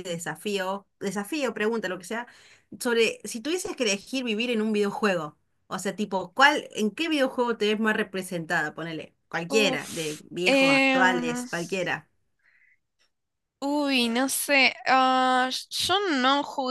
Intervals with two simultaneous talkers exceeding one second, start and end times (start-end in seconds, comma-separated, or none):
9.5-11.5